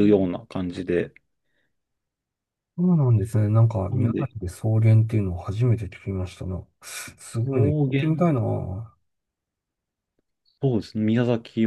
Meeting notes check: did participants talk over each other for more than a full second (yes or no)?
no